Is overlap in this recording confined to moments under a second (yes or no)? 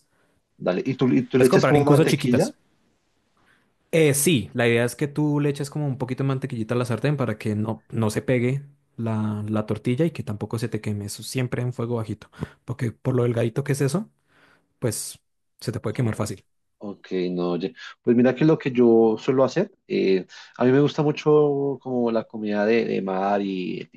no